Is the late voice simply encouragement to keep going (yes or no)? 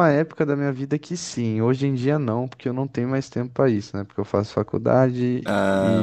yes